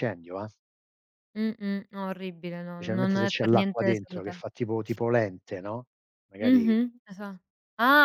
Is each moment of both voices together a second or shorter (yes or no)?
no